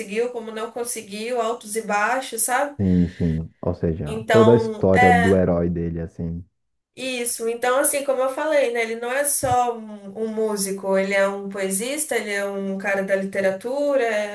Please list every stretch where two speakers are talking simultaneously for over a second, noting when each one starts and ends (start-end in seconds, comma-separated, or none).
4.1-5.4